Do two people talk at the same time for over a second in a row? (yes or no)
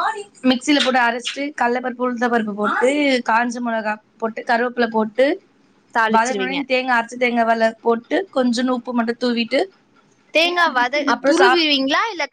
no